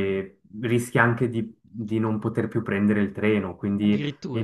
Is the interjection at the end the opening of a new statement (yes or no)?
yes